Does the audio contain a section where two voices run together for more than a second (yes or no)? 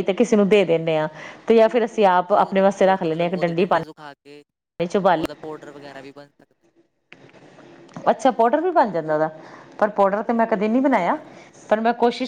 yes